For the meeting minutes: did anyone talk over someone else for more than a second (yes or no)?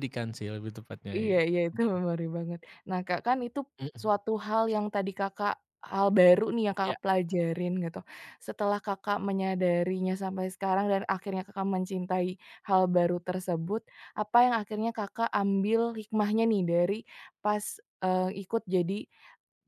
no